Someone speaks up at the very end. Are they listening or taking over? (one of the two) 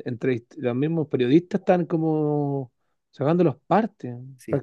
taking over